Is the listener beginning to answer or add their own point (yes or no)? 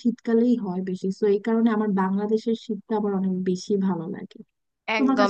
yes